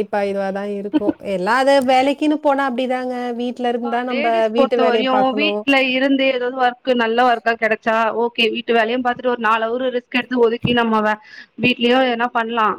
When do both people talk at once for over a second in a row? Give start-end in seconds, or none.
none